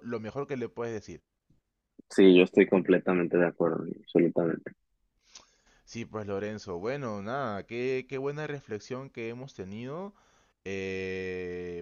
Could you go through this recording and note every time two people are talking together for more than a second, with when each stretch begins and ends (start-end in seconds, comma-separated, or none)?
none